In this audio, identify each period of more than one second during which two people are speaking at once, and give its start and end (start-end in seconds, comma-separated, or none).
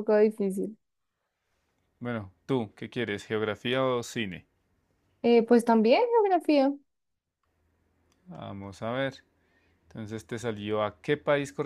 none